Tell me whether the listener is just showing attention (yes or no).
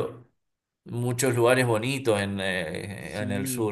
no